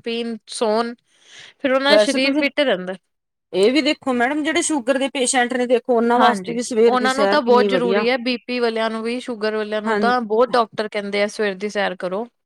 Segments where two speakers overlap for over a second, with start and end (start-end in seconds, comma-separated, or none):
6.2-8.0